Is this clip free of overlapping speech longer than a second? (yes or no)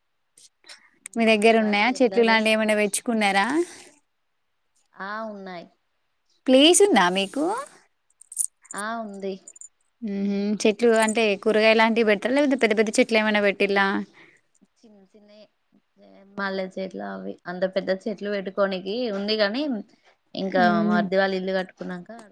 no